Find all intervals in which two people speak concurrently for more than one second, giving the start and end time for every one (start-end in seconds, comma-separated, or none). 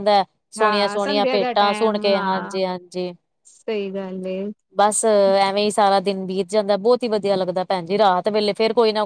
0.6-2.5